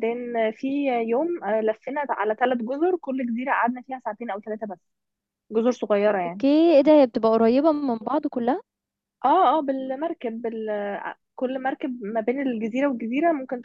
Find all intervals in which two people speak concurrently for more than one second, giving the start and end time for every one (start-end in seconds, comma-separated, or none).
none